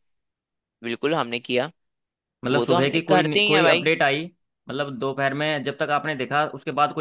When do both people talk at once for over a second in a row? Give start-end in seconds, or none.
2.5-3.9